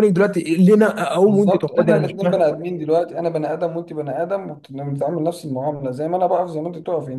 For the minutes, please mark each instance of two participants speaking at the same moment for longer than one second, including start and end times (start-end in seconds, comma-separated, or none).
1.3-2.5